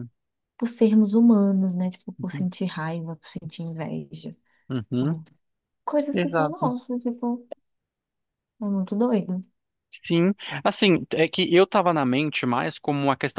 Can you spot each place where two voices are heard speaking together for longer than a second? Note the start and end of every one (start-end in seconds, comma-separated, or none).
none